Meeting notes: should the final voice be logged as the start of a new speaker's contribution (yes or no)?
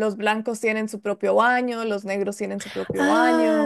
yes